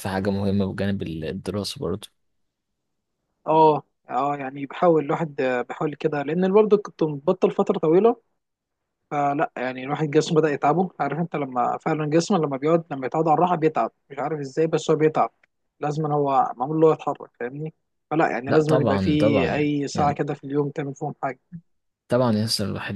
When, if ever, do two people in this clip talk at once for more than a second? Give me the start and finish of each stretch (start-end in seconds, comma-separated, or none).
18.5-20.2